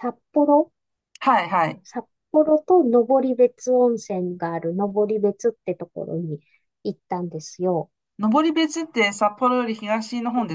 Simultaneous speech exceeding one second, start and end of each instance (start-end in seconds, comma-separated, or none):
none